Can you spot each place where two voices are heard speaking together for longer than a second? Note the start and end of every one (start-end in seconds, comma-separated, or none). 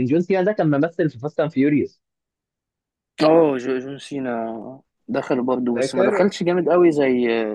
none